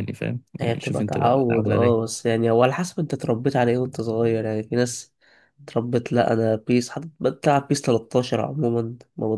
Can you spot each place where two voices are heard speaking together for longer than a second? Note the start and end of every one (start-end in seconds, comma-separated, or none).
0.6-2.1